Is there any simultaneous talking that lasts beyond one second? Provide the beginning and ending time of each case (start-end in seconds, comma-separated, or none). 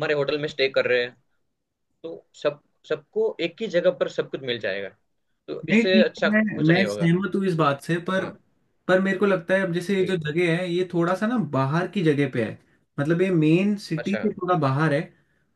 5.7-7.1